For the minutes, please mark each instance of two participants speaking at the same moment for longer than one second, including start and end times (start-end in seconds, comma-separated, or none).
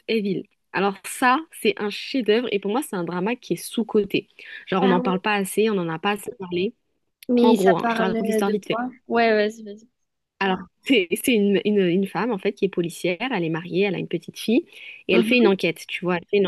7.4-8.8